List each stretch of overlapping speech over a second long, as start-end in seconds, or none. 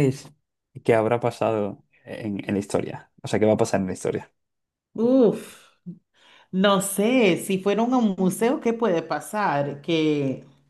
none